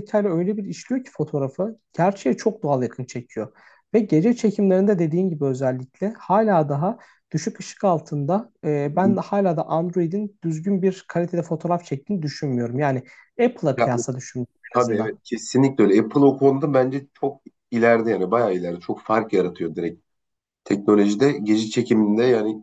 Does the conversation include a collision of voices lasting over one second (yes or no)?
no